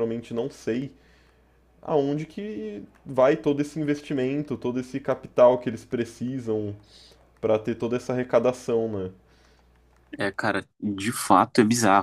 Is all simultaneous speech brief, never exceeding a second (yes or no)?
yes